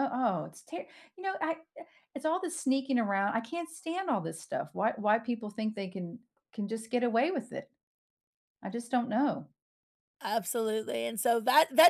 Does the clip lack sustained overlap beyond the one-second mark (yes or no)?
yes